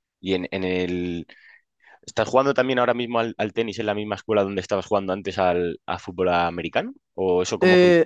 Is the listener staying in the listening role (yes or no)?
yes